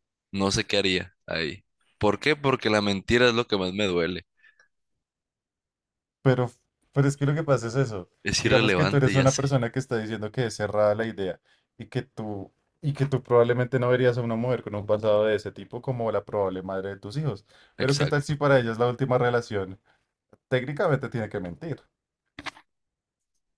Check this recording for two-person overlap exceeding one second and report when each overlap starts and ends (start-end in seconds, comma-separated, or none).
8.2-9.6